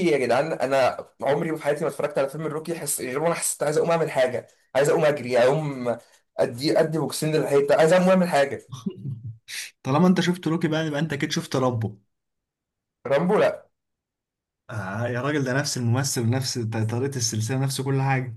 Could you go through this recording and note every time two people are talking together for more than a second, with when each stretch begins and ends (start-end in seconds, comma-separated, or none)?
none